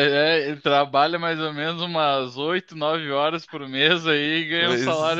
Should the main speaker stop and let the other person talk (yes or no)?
yes